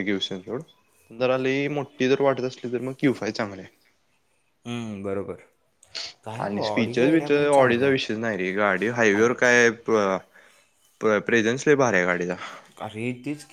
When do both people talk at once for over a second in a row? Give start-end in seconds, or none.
6.4-8.0